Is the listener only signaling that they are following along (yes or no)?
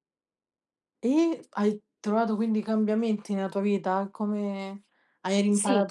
yes